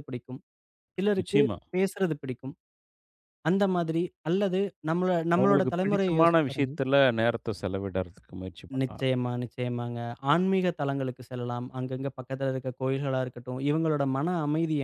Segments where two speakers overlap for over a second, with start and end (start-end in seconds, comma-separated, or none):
5.4-6.7